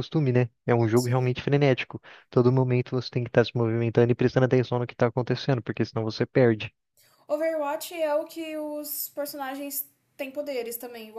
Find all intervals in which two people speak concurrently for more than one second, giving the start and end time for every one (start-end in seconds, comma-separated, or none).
none